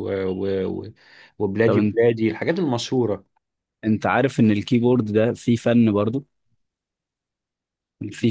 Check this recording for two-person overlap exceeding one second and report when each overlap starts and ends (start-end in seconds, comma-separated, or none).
none